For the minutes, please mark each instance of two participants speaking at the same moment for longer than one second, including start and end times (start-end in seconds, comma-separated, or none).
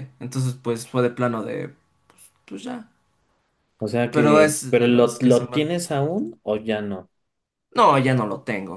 4.1-5.8